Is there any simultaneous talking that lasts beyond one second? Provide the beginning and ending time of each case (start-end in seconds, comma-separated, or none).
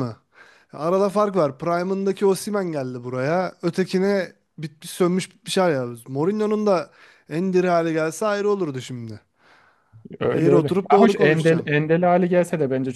10.3-11.7